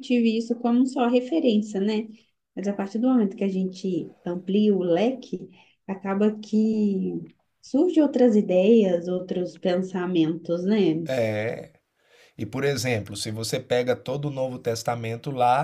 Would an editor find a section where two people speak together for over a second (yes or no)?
no